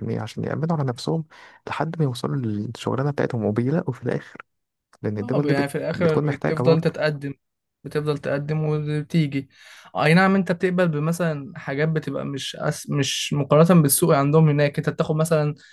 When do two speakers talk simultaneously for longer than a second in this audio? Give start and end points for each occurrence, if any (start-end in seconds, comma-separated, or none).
5.2-7.1